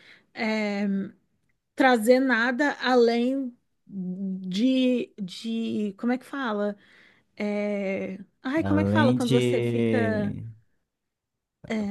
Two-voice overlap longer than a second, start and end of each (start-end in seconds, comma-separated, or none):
8.6-10.3